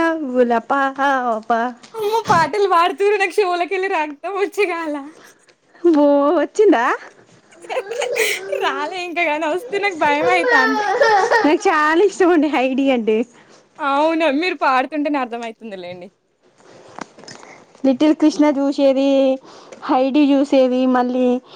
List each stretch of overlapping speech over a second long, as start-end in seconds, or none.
none